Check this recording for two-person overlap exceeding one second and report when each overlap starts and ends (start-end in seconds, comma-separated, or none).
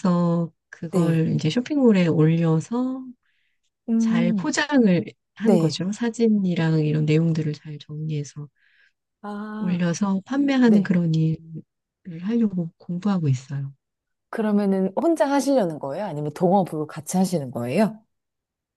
none